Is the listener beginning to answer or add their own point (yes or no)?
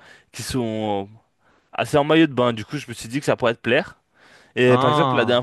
no